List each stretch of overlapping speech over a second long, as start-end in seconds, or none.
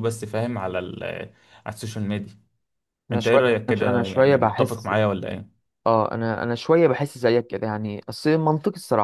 3.1-4.9